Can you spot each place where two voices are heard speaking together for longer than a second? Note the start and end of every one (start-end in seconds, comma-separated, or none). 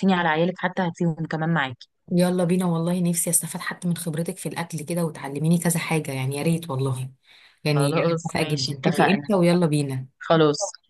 7.7-9.3